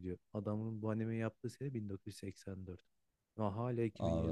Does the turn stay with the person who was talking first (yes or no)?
yes